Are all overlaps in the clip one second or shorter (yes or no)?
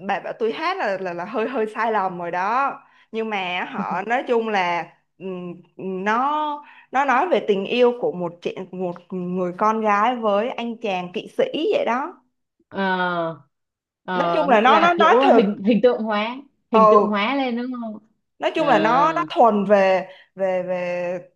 no